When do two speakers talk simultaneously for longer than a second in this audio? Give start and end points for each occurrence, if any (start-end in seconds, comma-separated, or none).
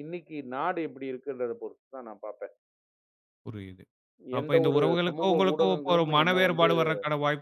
4.4-6.7